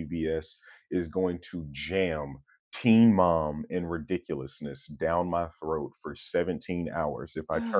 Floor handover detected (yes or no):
yes